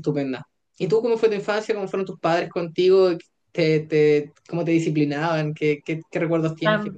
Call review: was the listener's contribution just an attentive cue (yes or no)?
no